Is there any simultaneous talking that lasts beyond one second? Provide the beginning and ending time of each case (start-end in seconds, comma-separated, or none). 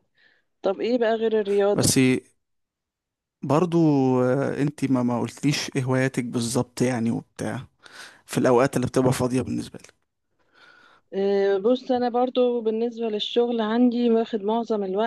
none